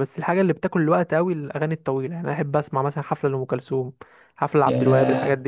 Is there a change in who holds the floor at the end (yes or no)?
yes